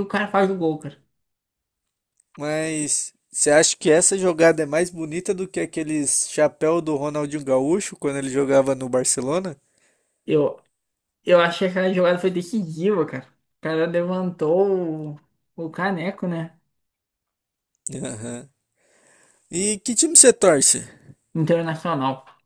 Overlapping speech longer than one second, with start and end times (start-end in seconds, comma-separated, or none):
none